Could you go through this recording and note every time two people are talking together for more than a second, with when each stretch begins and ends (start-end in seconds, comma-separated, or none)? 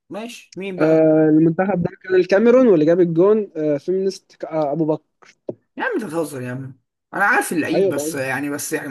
none